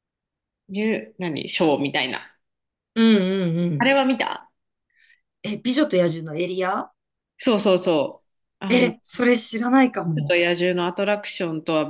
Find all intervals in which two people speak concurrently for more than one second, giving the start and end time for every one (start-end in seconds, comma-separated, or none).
none